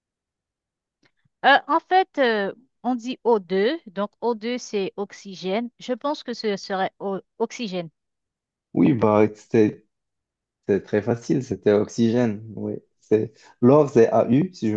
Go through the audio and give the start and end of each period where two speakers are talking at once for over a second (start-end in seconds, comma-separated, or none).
none